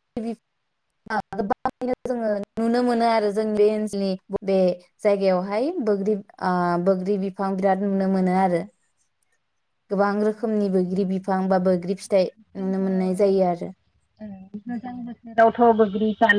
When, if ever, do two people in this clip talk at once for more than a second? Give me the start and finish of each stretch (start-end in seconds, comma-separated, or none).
none